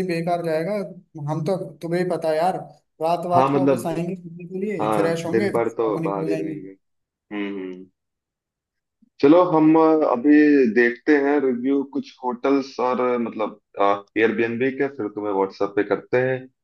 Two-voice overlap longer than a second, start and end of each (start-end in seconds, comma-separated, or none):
4.8-6.5